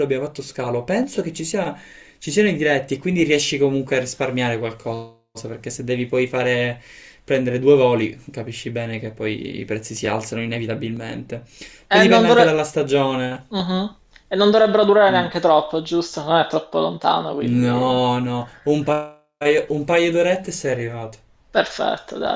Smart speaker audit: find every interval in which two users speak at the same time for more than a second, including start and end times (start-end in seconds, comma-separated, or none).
none